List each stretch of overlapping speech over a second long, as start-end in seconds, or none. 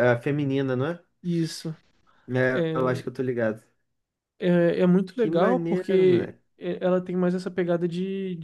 5.2-6.4